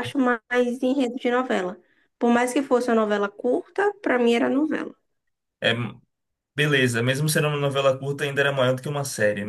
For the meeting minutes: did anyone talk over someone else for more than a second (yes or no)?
no